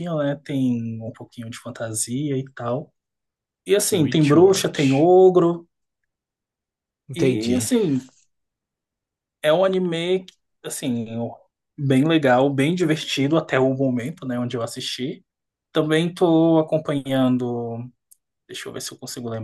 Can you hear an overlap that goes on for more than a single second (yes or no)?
yes